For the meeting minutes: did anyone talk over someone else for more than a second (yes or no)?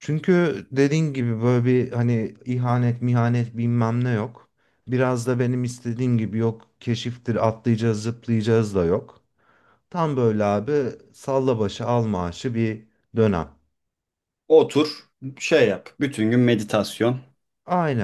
no